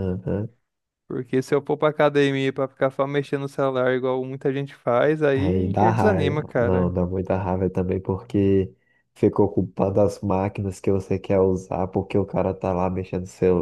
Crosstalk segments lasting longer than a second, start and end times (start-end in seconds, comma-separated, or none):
5.3-7.0